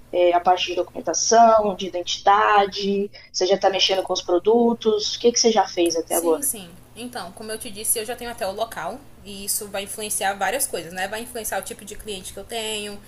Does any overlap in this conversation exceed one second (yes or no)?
no